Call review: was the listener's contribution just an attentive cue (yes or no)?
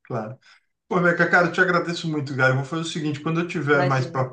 yes